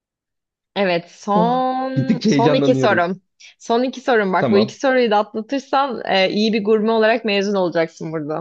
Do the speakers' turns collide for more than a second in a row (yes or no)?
yes